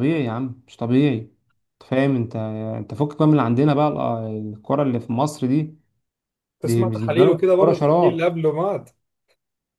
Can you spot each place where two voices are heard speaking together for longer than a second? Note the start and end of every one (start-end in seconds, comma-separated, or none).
6.9-8.3